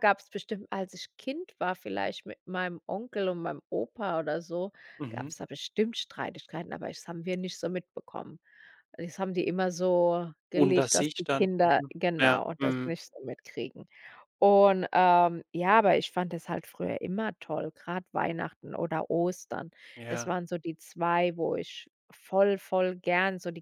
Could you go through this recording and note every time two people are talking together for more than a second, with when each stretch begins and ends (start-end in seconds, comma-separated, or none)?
10.5-13.0